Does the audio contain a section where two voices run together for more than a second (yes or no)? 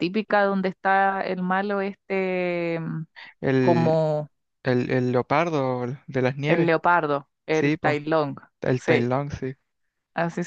no